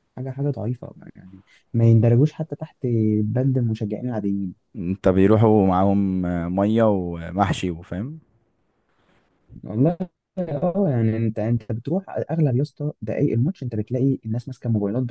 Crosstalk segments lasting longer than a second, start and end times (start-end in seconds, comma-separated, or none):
none